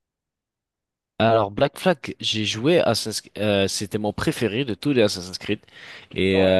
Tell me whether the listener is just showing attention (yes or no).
yes